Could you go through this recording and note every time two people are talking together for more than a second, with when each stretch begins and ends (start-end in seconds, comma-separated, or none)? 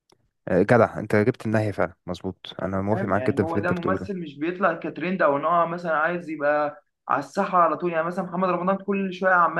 2.9-4.1